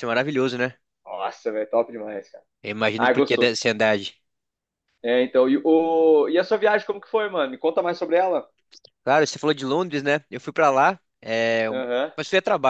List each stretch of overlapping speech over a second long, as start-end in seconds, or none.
none